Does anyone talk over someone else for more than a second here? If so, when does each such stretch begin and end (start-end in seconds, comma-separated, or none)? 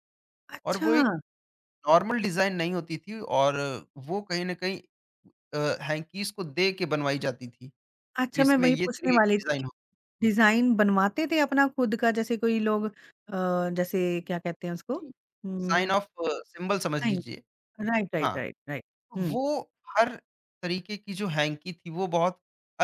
8.2-9.6